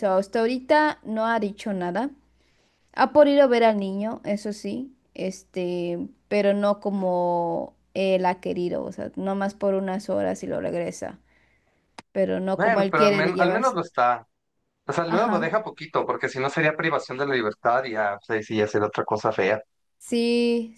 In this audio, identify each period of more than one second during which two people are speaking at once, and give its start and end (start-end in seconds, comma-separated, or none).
12.5-13.8